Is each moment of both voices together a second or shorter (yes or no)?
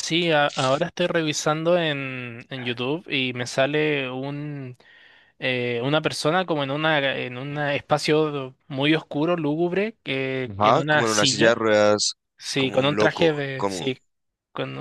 no